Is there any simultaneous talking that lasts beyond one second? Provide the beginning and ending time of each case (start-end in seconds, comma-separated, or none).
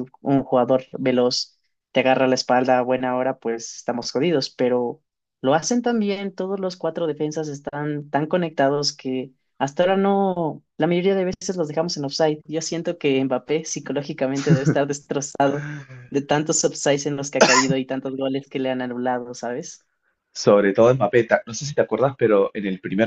none